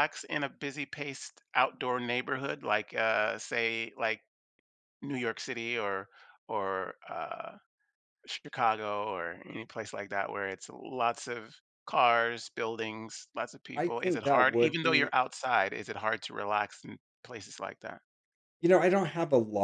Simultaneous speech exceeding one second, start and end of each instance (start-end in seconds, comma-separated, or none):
13.7-15.1